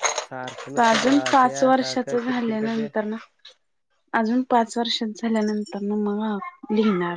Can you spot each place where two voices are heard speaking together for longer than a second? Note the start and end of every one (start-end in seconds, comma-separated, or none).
0.8-2.9